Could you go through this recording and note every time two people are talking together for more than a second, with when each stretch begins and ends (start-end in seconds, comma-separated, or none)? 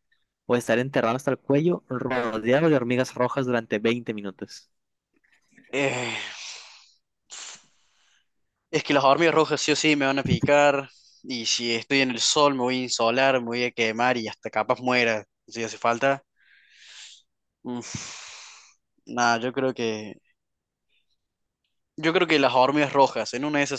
none